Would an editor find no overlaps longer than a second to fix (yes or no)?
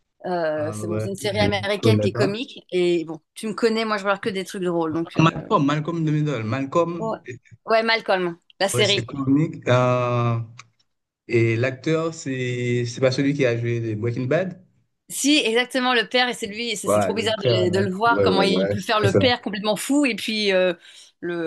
no